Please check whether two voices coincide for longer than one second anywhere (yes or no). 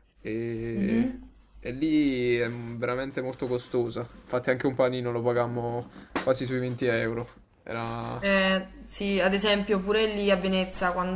no